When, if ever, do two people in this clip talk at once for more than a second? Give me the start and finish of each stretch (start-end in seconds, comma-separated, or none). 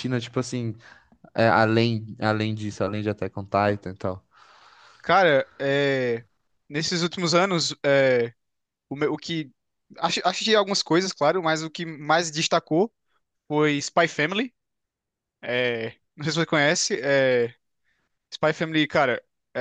none